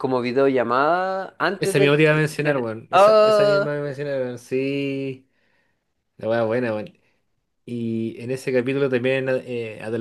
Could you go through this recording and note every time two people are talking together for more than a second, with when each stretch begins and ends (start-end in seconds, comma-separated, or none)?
1.6-3.7